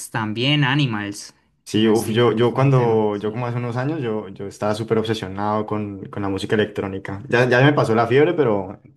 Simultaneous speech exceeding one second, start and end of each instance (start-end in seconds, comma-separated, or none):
1.7-3.4